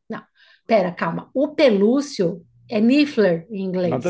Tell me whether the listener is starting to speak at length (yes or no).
yes